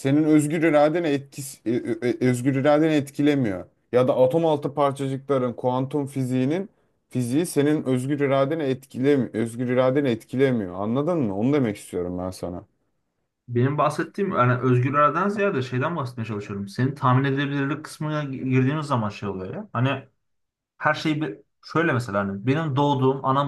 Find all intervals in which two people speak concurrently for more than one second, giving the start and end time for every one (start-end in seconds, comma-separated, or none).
none